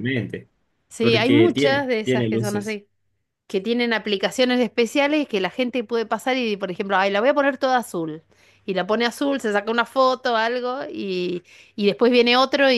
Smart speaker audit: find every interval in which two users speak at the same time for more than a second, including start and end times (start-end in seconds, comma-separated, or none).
1.0-2.8